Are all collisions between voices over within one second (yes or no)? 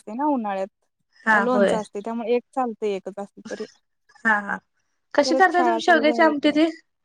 no